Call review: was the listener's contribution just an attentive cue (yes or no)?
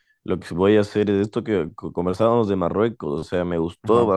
yes